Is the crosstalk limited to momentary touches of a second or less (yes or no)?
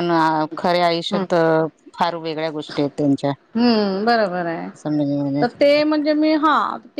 yes